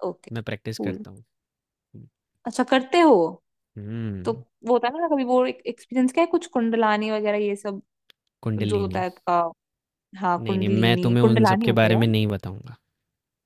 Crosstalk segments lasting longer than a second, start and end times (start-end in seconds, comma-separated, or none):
10.4-12.1